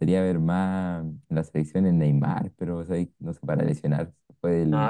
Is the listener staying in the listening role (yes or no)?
yes